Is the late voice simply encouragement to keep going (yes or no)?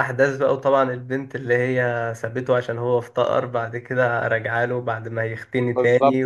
no